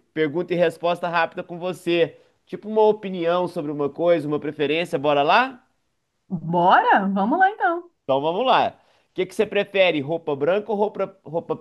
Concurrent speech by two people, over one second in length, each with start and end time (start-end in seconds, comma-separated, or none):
none